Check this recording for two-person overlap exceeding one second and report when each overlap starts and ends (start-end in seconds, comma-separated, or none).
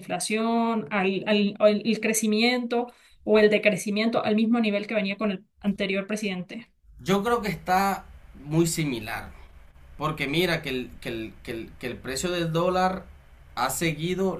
none